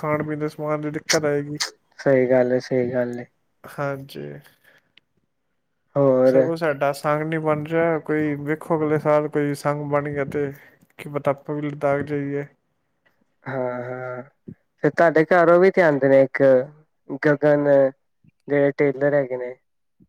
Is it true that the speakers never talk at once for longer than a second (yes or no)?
yes